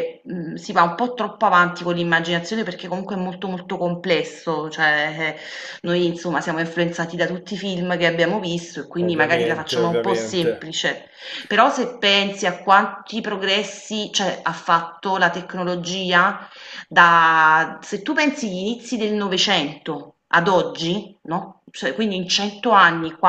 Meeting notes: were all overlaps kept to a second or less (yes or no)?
no